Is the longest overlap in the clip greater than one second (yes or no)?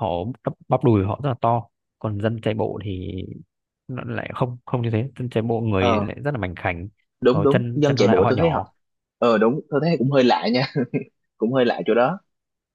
yes